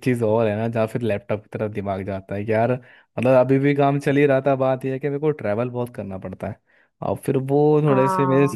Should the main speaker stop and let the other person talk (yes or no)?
no